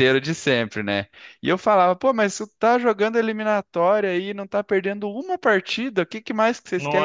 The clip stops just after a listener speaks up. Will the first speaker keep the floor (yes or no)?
yes